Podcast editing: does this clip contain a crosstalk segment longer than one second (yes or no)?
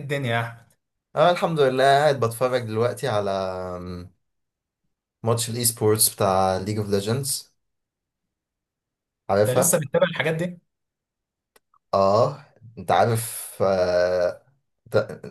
no